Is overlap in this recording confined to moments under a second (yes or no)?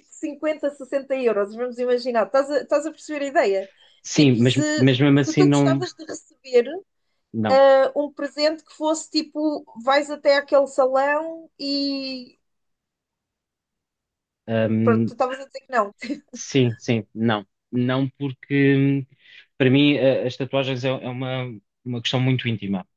no